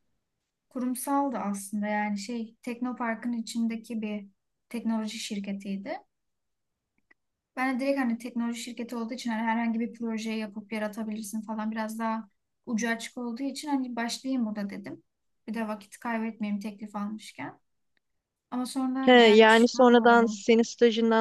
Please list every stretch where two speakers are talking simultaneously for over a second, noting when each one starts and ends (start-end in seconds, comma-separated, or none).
19.0-20.4